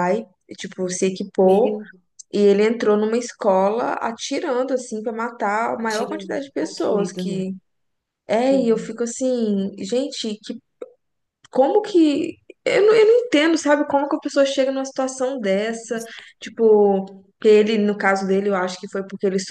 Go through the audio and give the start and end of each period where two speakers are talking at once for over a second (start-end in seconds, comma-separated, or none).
5.8-7.5